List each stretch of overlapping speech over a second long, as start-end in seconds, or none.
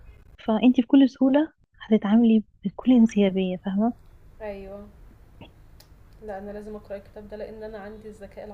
none